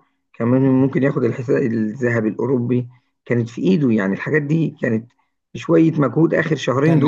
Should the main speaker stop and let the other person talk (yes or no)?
yes